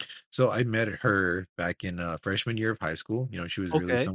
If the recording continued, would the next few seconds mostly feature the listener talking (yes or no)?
no